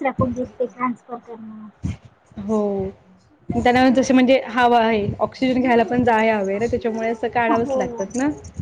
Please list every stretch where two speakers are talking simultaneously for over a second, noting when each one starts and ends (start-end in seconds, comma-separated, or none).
none